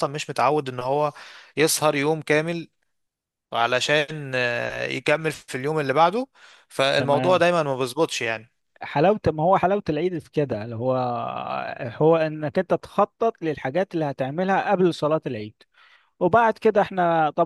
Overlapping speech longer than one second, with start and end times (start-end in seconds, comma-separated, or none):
none